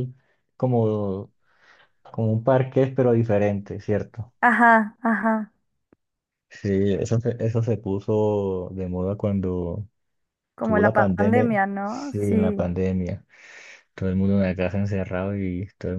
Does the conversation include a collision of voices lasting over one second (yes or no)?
yes